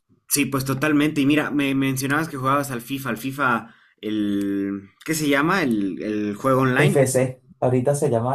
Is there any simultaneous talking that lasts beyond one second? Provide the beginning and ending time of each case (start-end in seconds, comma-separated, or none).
none